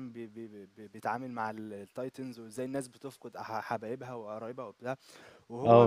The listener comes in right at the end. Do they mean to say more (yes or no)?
no